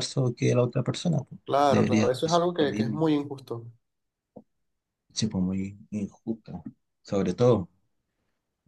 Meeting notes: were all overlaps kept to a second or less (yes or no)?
no